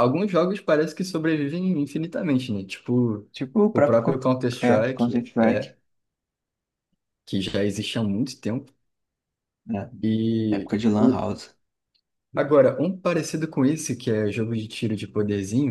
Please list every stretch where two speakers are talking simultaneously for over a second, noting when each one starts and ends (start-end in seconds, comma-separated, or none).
3.7-5.7